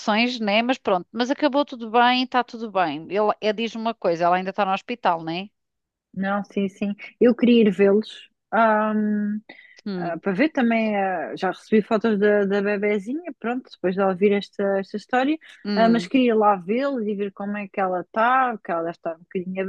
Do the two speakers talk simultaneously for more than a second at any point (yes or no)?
no